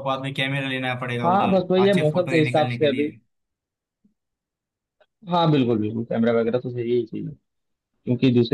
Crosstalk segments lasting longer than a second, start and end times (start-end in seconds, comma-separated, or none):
1.2-3.1